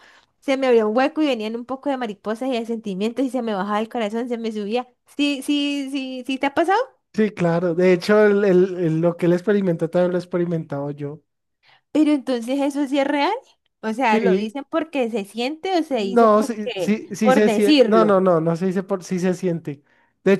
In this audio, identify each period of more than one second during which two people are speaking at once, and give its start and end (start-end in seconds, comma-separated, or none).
15.9-18.2